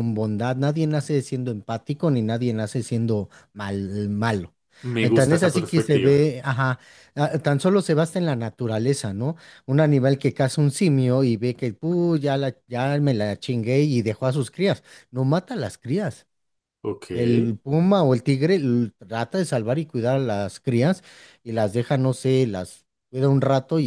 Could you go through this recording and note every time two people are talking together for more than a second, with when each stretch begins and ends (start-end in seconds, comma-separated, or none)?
5.0-6.3